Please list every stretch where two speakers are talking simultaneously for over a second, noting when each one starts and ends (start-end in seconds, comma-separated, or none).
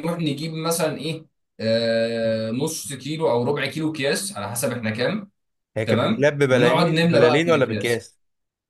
5.8-8.1